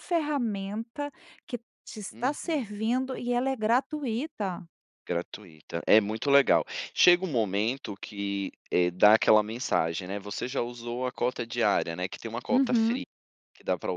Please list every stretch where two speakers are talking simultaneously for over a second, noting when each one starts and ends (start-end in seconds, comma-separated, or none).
none